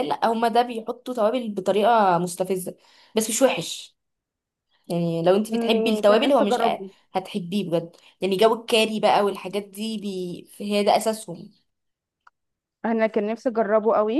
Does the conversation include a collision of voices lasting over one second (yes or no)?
yes